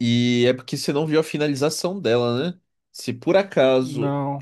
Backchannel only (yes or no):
yes